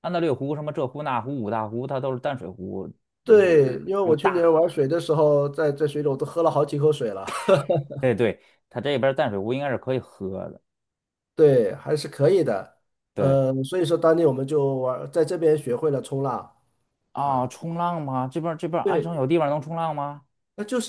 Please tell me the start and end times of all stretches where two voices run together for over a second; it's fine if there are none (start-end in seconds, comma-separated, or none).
3.2-4.6